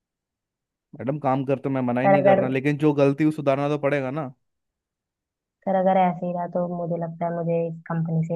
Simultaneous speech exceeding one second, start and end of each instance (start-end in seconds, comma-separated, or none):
none